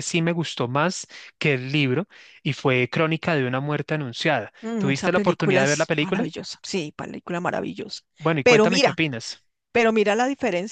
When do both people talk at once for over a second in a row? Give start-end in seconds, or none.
4.6-6.3